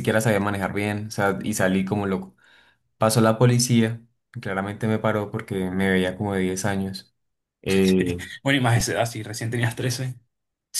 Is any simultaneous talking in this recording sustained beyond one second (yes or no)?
no